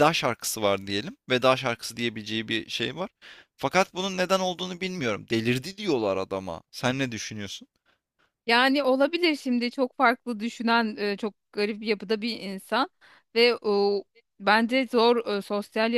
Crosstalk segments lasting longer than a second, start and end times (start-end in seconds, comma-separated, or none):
none